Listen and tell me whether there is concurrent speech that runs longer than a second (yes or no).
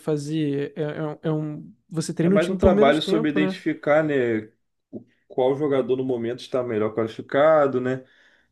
yes